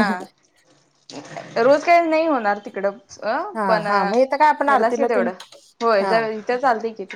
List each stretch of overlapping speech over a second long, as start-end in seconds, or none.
3.6-5.3